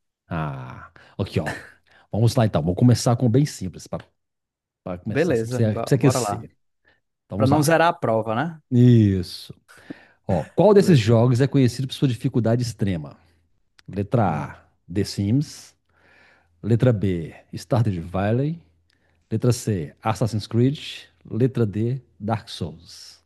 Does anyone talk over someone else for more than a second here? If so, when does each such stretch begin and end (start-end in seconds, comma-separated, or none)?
5.1-6.4